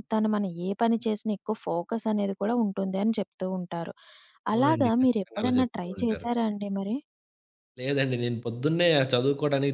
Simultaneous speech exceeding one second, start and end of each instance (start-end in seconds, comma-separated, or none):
4.5-6.3